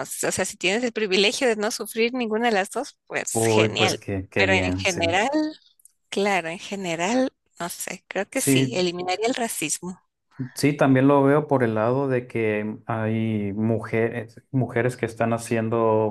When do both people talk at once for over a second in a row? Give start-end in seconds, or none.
3.3-5.2